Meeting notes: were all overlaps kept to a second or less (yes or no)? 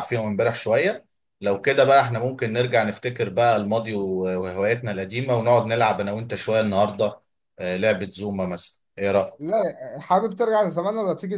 yes